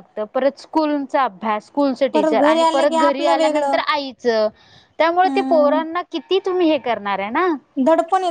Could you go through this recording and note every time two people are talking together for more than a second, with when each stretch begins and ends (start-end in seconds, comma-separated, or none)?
2.1-3.8